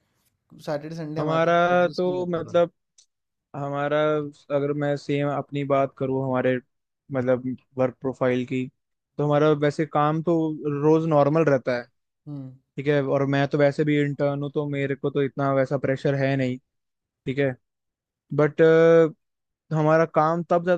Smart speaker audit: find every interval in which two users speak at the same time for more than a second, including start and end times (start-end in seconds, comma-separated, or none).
1.2-2.6